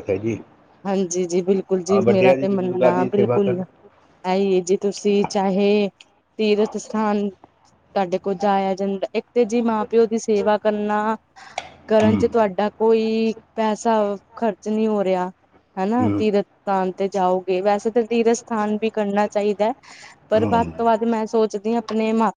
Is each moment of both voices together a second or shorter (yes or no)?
no